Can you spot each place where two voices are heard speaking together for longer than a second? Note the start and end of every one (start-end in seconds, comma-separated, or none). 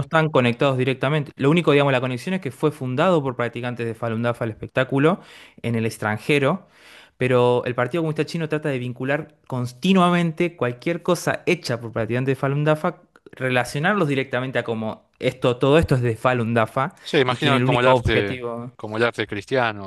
17.0-18.4